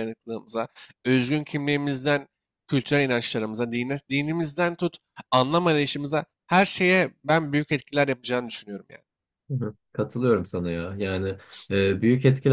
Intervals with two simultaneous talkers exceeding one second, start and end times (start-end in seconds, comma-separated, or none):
none